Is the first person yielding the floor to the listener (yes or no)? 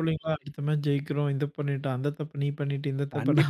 yes